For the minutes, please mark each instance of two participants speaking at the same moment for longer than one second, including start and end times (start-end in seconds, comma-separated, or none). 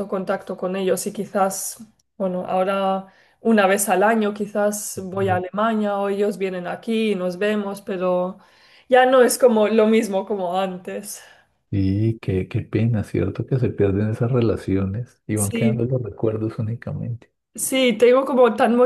none